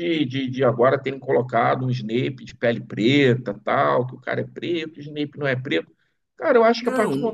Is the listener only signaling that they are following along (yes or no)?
yes